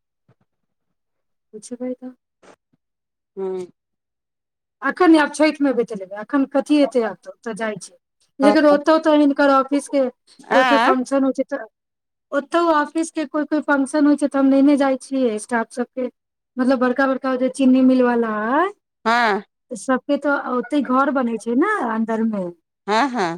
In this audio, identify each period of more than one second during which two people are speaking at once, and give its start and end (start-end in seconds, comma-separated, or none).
none